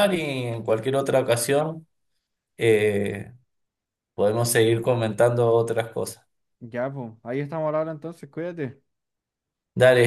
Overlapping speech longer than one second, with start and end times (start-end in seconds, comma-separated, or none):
none